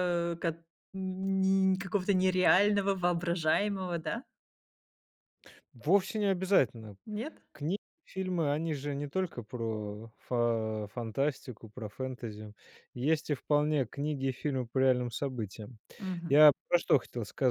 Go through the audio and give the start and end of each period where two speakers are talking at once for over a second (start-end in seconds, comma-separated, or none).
none